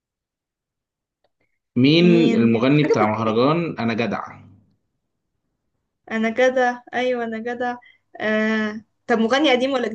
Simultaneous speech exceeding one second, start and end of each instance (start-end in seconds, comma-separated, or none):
2.0-3.4